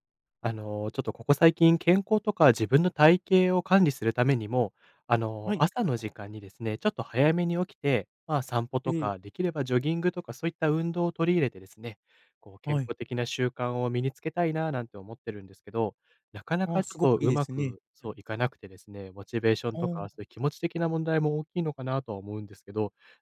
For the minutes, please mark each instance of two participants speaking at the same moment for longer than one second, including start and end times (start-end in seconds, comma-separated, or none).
16.6-18.1